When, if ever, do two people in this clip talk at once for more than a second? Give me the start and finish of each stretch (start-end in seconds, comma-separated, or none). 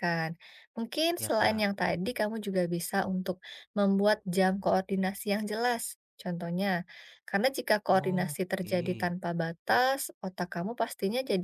7.9-9.1